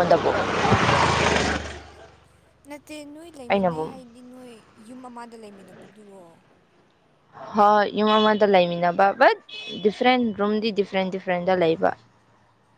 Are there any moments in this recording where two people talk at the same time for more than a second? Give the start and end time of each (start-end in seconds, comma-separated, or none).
none